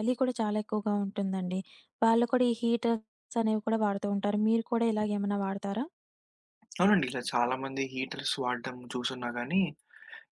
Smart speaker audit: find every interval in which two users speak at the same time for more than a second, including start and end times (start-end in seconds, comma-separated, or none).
none